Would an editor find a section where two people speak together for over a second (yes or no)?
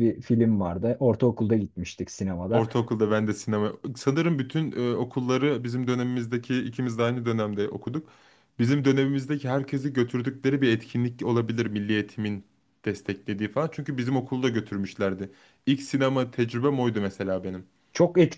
no